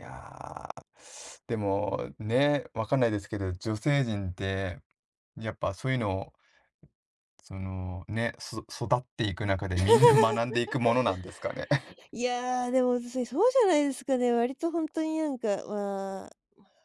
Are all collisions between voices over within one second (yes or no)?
yes